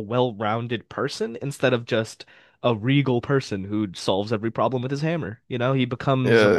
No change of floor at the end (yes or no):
no